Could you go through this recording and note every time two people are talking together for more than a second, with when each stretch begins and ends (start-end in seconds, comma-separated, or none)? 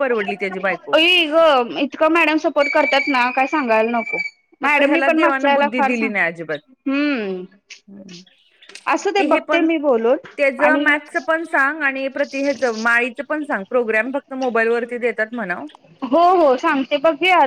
4.6-6.1